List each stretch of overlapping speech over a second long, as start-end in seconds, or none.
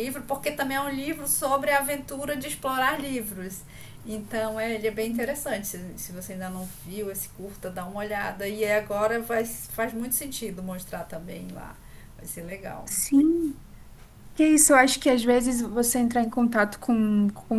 none